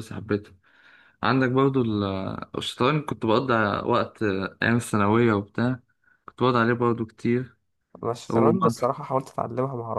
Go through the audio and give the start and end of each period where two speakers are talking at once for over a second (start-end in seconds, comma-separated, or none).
none